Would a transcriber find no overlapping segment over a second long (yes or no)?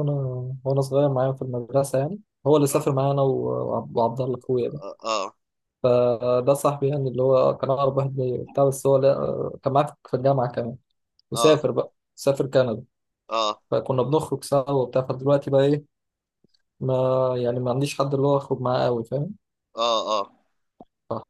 yes